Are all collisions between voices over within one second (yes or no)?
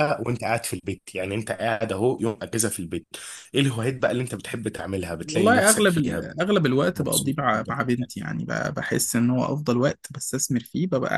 no